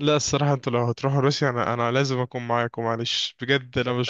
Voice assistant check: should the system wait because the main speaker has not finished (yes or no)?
no